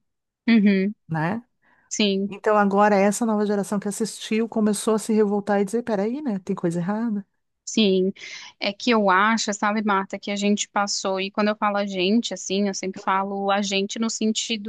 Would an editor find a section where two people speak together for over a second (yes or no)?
no